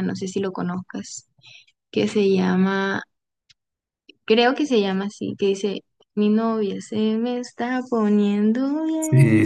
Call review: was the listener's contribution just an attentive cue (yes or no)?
no